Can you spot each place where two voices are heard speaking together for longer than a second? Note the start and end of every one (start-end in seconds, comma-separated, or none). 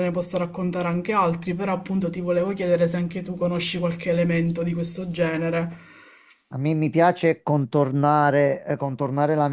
none